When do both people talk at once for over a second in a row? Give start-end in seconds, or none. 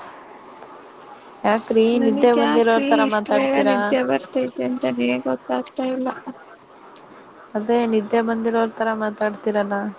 2.0-3.8